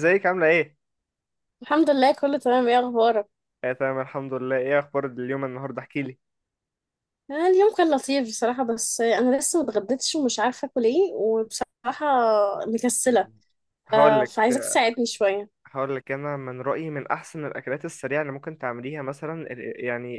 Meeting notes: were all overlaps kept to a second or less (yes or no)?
yes